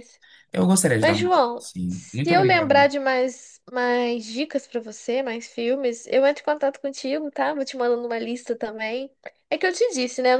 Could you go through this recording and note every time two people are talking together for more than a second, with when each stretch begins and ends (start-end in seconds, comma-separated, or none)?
1.0-2.9